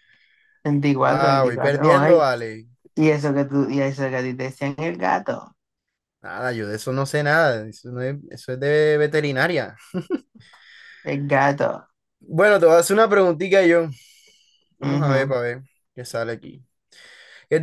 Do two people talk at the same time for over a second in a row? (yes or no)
yes